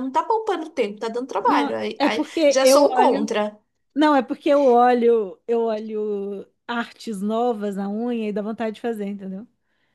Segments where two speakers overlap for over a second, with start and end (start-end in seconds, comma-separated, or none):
1.4-3.3